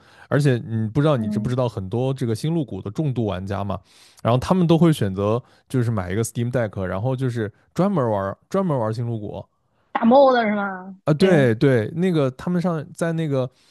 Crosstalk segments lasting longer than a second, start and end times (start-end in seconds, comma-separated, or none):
none